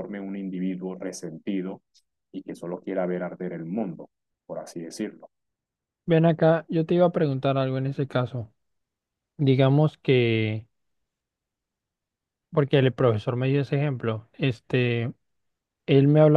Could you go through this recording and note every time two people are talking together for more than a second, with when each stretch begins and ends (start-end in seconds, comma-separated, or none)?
none